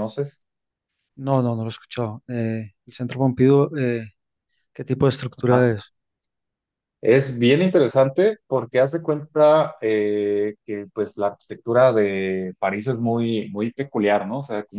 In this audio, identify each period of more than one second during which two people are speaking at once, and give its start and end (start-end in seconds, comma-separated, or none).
none